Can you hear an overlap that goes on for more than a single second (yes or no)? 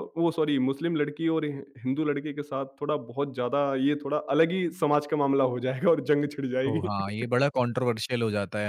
no